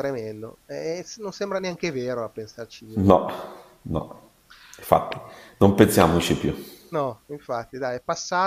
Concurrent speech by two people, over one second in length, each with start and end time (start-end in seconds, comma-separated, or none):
none